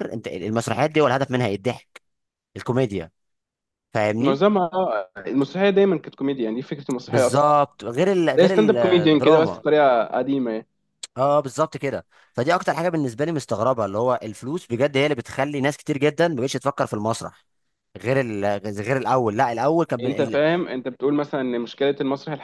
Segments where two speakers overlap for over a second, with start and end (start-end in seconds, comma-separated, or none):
8.4-9.6